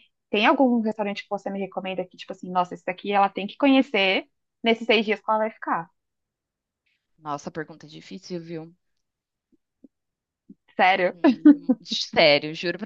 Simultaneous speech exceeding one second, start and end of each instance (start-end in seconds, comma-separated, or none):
none